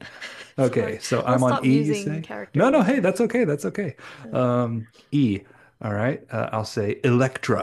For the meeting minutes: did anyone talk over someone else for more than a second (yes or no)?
yes